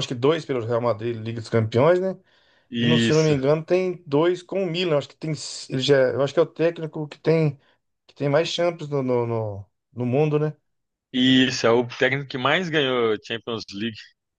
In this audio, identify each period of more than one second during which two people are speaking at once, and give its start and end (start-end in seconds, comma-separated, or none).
none